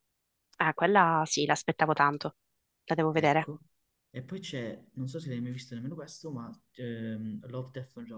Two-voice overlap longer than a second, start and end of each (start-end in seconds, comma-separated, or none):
none